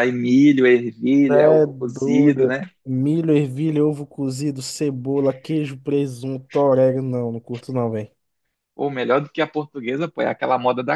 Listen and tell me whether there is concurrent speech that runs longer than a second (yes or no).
yes